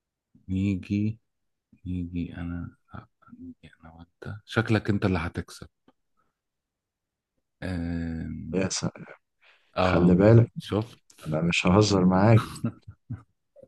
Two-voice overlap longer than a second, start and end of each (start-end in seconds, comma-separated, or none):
none